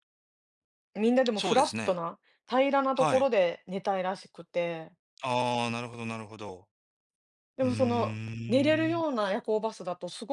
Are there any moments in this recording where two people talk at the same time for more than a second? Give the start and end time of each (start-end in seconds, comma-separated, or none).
7.6-9.0